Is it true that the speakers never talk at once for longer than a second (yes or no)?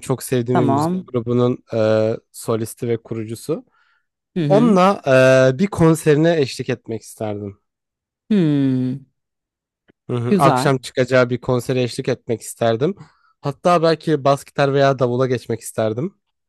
yes